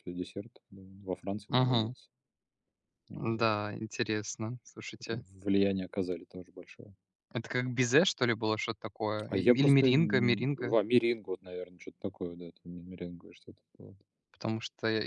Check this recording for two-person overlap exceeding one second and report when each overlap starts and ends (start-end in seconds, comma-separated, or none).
9.3-10.8